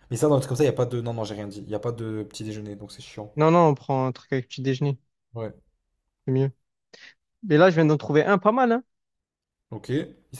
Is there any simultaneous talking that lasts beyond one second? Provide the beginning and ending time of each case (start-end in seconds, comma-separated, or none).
none